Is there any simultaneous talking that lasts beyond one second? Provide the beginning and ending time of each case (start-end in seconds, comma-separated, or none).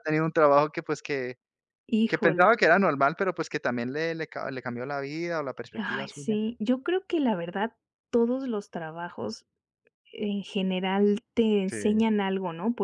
none